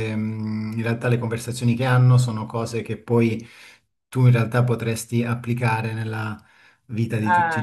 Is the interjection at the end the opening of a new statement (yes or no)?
no